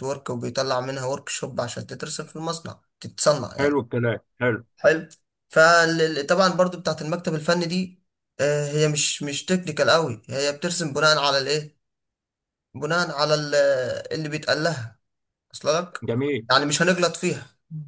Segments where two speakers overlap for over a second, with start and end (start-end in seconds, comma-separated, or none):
none